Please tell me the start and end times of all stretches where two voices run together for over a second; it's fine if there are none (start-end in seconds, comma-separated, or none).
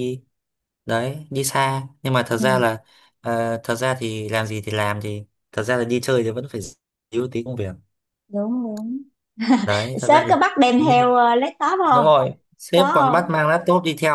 none